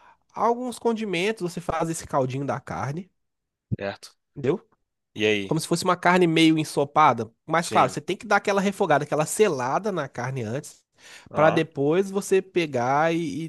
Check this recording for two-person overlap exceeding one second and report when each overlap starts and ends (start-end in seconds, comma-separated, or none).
none